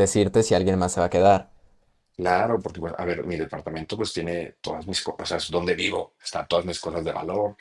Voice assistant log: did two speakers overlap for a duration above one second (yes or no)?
no